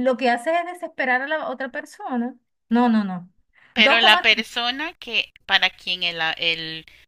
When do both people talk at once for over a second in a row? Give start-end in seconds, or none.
none